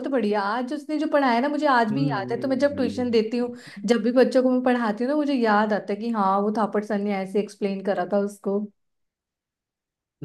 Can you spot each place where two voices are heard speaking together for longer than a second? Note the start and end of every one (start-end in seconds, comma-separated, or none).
1.9-3.7